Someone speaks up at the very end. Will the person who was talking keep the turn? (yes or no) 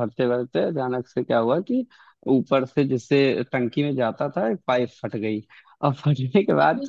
yes